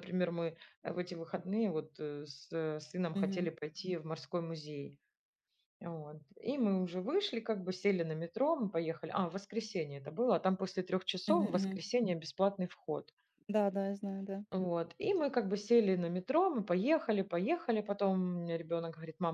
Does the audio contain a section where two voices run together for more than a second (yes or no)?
no